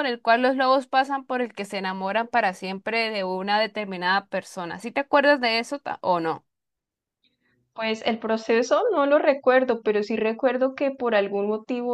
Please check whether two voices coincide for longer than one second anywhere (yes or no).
no